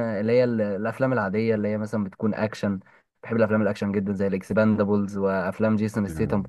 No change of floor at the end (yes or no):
yes